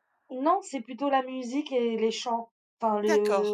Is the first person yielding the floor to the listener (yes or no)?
no